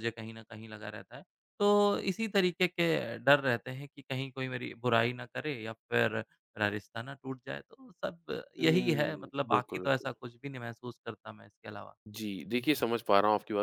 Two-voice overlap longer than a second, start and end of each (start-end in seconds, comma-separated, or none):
8.6-10.1